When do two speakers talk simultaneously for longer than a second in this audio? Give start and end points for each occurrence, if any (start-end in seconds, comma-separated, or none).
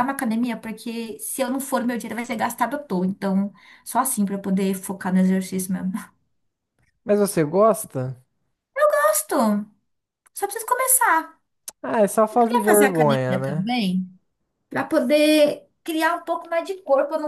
12.3-13.7